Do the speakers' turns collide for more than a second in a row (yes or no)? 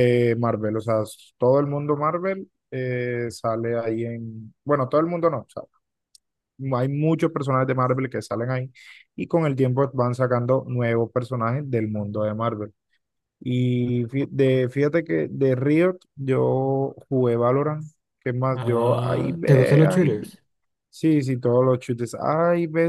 yes